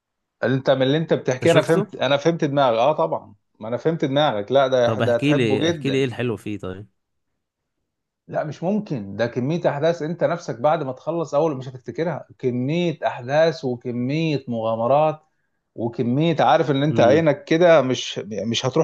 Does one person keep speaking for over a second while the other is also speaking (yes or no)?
yes